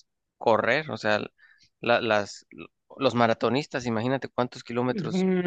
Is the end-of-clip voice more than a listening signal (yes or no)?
yes